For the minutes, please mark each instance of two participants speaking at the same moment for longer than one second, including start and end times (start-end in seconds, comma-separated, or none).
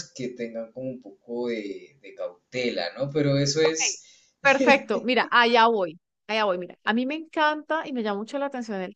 none